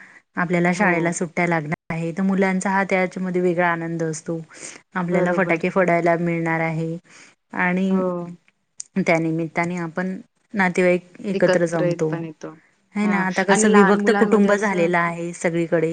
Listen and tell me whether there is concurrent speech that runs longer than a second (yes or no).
yes